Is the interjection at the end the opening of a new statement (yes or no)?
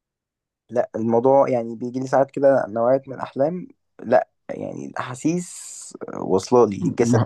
yes